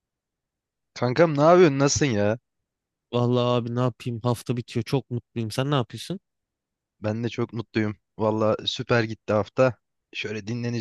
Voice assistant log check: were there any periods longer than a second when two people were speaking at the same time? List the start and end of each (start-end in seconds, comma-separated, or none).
none